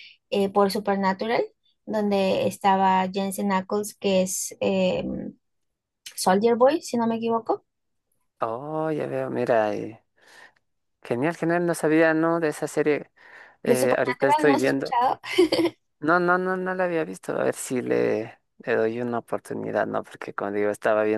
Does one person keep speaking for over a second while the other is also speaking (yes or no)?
yes